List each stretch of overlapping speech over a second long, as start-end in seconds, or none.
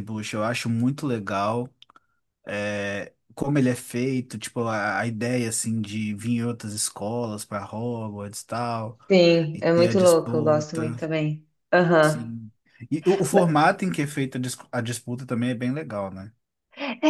9.5-11.0